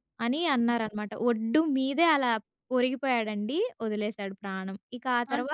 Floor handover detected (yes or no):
no